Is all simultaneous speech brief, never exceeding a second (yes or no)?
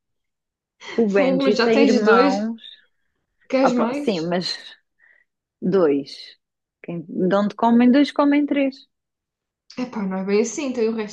no